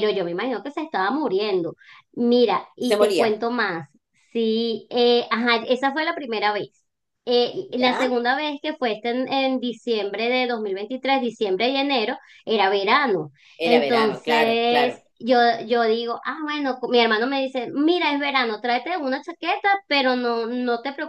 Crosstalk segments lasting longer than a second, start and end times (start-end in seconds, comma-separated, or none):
13.7-14.9